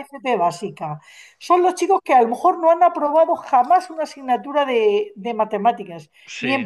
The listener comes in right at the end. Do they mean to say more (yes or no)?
no